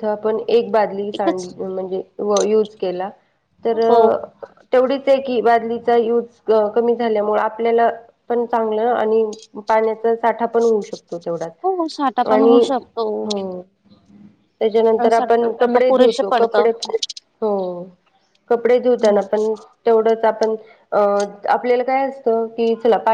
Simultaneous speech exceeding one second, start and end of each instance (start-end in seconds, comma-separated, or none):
15.0-16.7